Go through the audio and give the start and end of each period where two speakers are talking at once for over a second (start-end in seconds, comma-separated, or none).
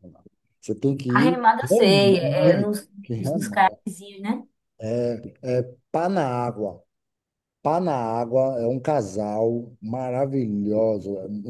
1.1-3.8